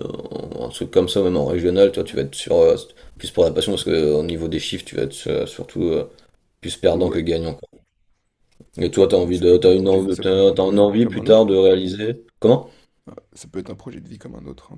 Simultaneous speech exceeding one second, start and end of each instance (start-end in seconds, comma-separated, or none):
9.1-11.5